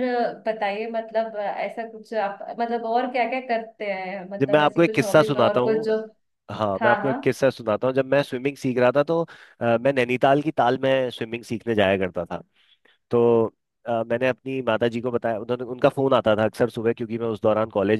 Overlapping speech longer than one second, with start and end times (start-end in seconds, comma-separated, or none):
4.4-6.0